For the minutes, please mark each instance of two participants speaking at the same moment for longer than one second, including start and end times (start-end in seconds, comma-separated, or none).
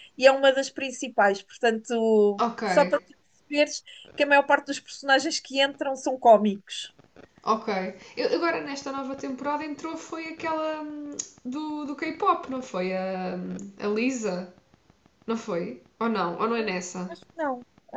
none